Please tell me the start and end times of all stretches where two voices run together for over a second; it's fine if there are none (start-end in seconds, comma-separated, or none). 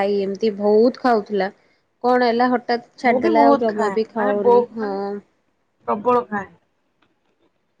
3.1-5.0